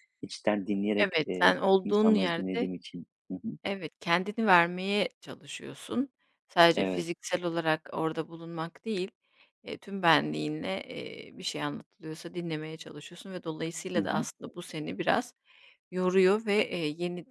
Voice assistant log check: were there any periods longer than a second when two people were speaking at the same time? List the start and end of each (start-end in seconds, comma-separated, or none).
1.0-2.7